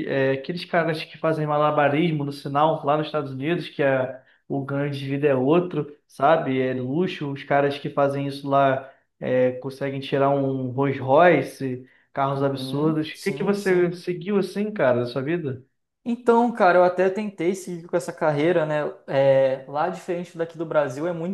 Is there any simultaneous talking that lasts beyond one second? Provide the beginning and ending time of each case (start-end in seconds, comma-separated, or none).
12.3-13.9